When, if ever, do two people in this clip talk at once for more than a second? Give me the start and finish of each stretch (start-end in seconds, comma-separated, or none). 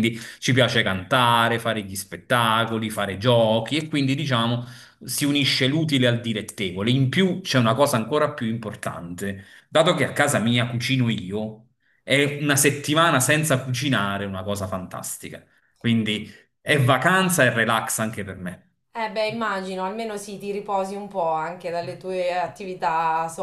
none